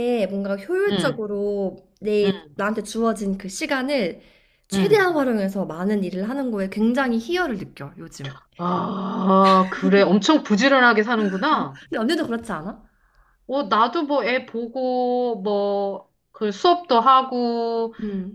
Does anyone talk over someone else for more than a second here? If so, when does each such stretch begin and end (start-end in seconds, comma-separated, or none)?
none